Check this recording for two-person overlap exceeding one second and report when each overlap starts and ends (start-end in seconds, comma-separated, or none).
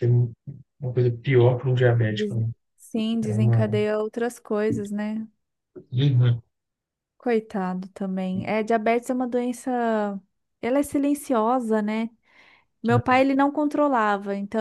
none